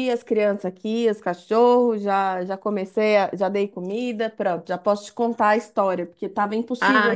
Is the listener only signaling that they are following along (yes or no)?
no